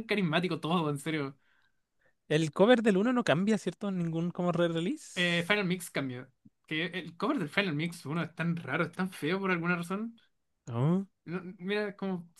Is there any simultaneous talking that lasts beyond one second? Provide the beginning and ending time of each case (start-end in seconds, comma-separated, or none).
none